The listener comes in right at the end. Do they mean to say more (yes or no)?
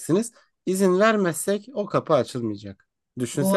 no